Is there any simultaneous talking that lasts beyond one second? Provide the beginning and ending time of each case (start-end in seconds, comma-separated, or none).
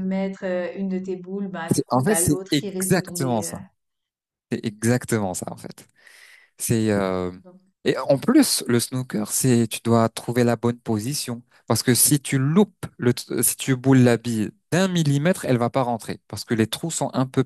1.7-3.5